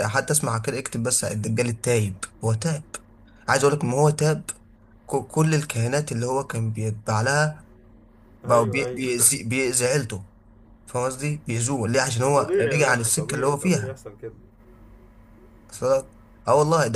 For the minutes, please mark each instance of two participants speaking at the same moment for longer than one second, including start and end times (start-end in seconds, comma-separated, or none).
12.2-14.0